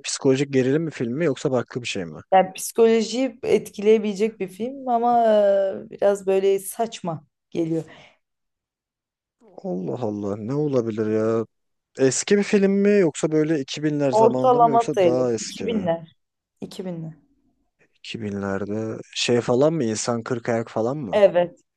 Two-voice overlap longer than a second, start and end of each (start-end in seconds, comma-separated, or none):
14.1-15.9